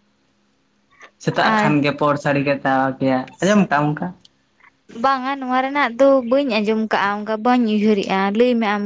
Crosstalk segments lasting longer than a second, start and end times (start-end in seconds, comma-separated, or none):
none